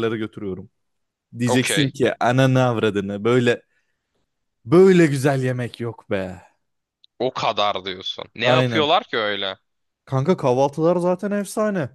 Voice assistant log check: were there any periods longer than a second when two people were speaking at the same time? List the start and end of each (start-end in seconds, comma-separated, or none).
none